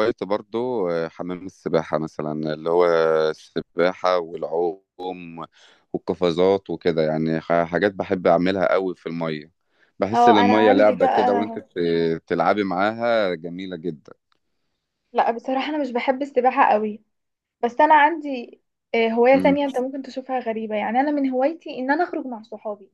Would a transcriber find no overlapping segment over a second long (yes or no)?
no